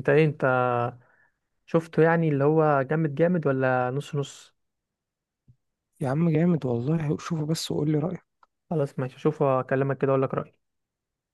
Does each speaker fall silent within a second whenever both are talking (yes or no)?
yes